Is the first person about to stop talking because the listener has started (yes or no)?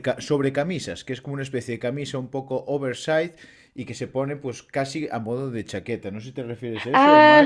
yes